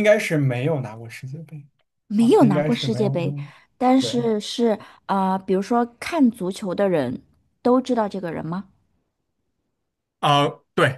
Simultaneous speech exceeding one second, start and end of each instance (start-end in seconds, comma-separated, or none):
2.1-3.4